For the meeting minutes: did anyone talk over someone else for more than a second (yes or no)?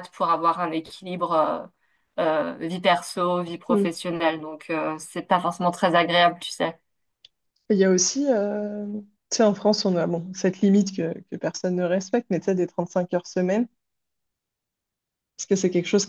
no